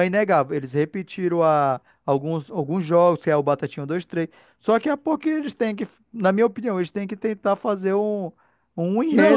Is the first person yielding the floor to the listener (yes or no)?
yes